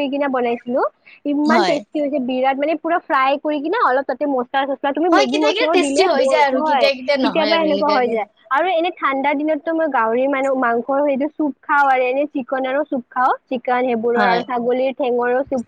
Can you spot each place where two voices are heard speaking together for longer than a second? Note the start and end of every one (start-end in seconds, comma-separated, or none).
5.1-8.1